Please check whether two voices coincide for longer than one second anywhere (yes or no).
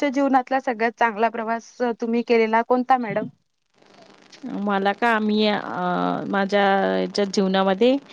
no